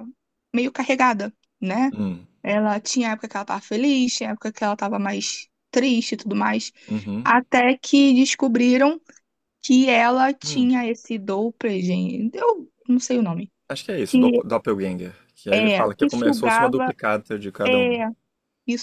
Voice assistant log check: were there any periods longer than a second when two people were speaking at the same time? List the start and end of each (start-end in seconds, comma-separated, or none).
15.5-16.9